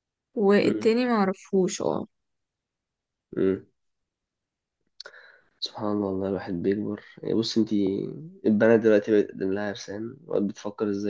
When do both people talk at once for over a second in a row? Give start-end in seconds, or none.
none